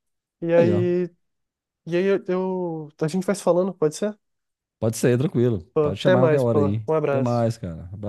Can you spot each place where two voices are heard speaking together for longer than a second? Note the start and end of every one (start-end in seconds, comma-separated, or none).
5.7-7.4